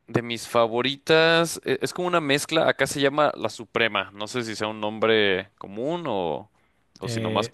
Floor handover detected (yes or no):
yes